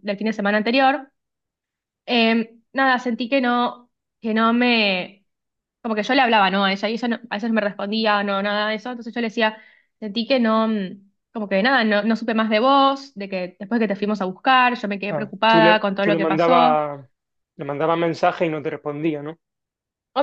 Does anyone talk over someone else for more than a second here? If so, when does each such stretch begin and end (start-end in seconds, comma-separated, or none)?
15.1-16.8